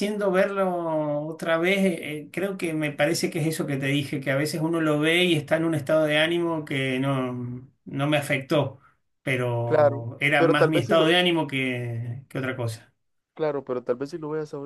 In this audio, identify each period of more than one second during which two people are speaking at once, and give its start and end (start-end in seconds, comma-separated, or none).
9.7-11.1